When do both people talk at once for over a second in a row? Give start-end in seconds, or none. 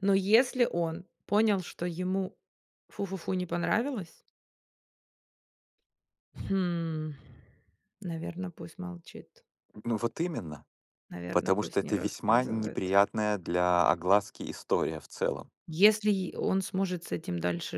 11.3-12.9